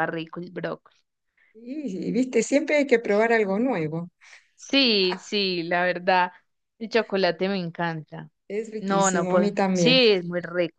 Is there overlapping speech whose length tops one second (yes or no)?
yes